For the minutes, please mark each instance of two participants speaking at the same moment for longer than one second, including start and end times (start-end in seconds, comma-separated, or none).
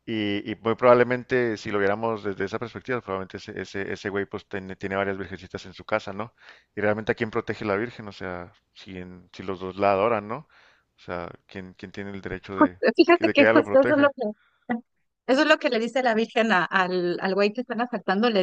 12.5-14.1